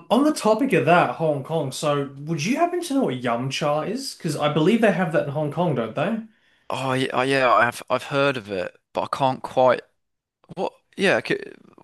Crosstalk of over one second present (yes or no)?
no